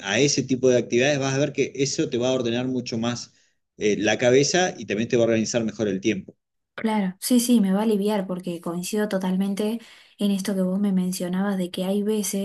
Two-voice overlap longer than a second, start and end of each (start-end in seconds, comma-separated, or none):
none